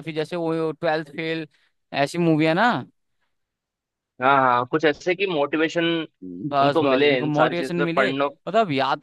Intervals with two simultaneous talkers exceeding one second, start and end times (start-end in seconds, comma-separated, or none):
6.6-8.1